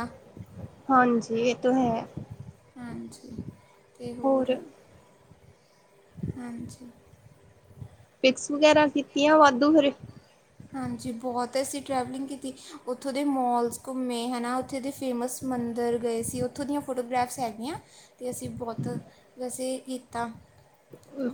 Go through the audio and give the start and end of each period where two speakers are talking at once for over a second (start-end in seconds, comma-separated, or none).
none